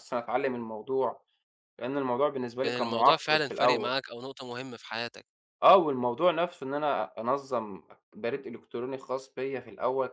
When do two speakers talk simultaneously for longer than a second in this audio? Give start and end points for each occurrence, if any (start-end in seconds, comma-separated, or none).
2.6-4.0